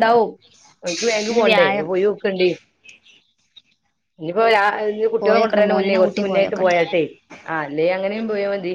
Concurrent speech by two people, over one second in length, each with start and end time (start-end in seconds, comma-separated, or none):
5.2-6.8